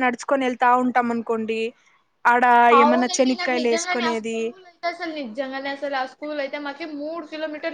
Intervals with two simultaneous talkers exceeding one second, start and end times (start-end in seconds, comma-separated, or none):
2.8-4.4